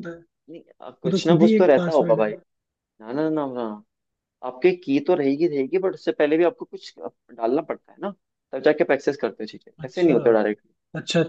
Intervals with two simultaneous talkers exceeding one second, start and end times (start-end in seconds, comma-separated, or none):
0.8-2.3